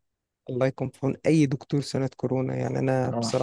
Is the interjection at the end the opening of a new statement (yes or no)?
no